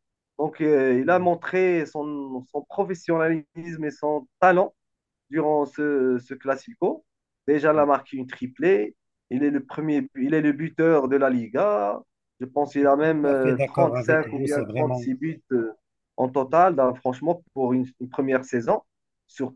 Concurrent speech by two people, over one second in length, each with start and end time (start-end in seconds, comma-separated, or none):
12.7-15.1